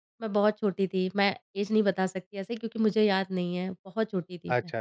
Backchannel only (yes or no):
yes